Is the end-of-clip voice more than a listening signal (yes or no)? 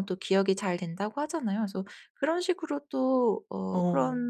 no